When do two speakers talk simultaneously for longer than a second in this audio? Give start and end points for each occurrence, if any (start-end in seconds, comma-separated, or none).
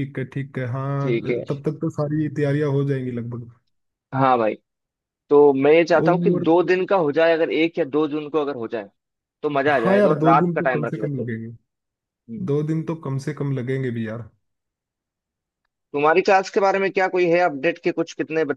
9.7-11.3